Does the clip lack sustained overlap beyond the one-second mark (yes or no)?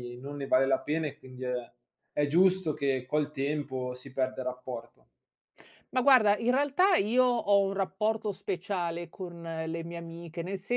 yes